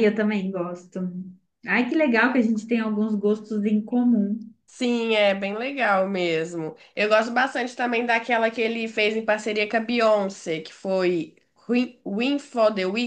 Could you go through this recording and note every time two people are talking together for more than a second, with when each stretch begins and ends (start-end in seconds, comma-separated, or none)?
none